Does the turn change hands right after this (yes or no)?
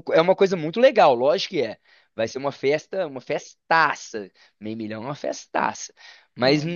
no